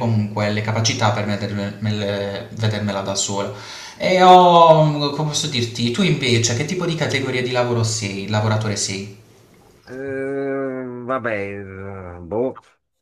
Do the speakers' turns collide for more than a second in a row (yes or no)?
no